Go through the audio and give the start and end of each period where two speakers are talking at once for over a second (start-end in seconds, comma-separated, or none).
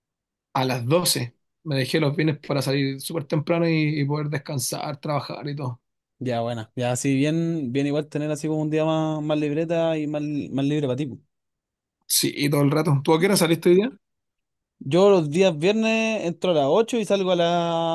none